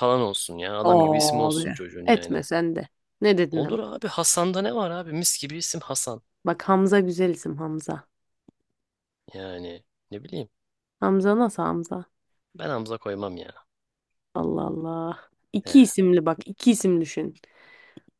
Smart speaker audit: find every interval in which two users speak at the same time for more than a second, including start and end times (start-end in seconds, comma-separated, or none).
0.8-2.4